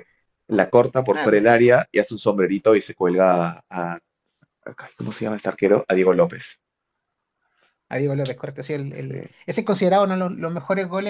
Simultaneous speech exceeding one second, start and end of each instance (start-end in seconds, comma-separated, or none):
none